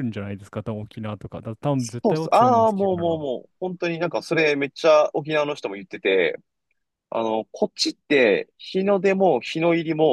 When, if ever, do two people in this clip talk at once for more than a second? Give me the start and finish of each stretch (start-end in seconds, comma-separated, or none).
1.8-3.2